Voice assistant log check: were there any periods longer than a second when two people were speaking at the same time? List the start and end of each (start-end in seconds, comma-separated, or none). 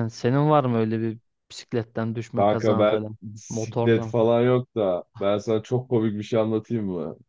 2.3-4.3